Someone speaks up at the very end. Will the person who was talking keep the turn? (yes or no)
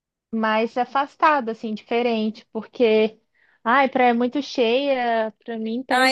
no